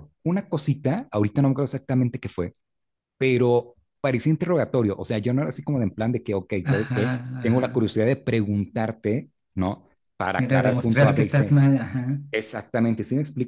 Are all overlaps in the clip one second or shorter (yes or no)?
no